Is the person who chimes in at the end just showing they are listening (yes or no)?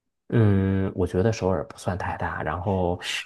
yes